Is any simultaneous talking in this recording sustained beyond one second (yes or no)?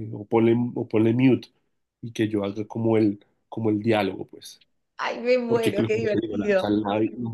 yes